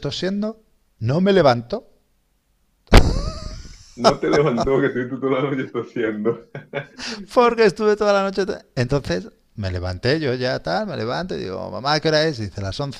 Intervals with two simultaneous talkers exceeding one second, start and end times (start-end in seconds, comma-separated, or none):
none